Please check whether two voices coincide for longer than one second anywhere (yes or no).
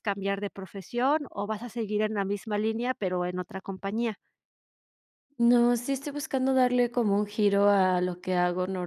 no